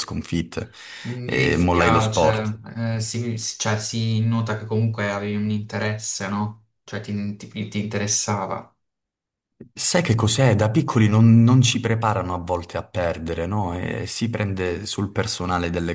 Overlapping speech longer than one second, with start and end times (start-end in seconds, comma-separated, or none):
1.2-2.6